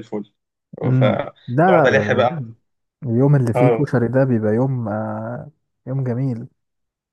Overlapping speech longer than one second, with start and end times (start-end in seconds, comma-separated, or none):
0.8-2.4